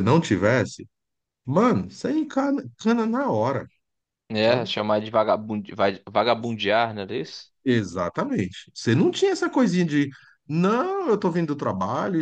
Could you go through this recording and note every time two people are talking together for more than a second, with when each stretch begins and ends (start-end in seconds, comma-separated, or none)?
none